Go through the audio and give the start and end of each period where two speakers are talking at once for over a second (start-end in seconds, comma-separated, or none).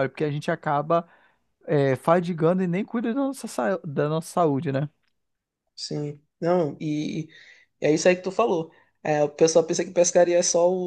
none